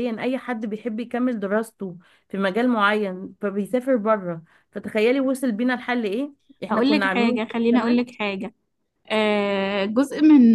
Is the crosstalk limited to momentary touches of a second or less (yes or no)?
no